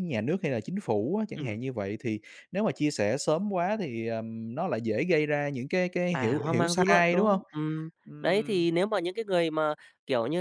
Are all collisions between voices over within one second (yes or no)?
no